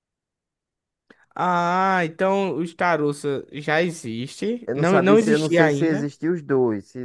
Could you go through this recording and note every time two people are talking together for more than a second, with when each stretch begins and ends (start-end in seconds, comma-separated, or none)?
4.7-6.1